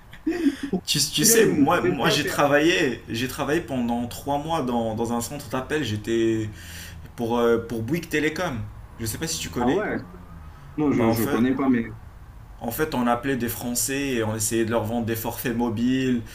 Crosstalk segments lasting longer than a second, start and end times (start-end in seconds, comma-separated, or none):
1.2-2.4